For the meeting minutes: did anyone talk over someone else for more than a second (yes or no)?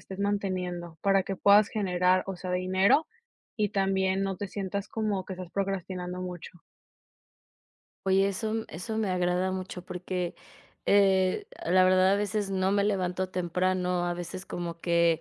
no